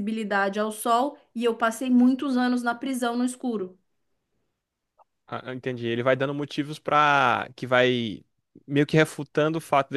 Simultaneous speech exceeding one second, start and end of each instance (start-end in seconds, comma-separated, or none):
none